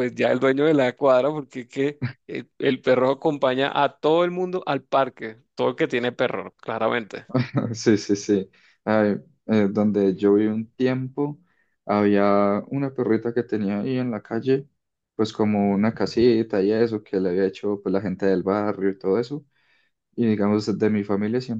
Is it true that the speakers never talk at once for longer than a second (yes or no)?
yes